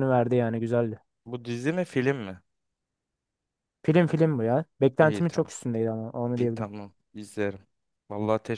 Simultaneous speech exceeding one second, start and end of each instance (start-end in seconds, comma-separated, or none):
none